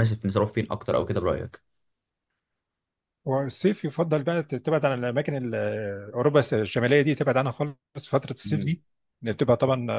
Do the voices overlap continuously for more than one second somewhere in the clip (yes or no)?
no